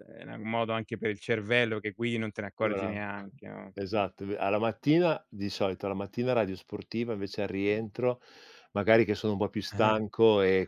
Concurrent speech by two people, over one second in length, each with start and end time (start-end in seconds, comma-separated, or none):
none